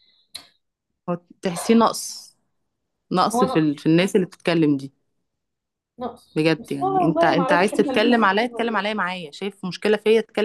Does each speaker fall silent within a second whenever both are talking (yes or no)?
no